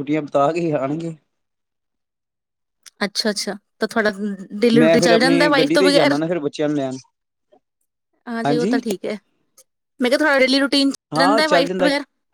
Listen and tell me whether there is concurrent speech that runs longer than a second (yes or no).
yes